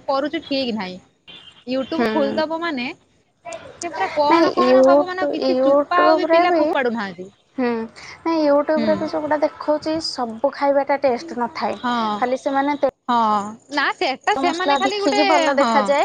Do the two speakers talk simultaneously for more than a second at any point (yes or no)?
yes